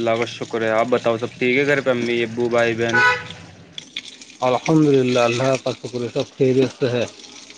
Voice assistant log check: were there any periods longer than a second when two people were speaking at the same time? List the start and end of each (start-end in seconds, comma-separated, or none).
none